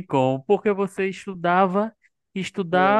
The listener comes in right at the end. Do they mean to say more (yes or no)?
no